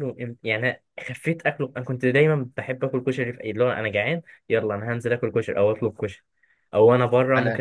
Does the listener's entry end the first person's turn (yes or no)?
no